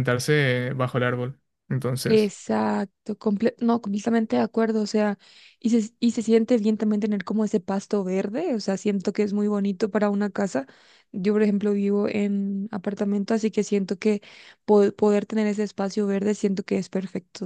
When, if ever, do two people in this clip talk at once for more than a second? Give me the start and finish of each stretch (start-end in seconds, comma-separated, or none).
none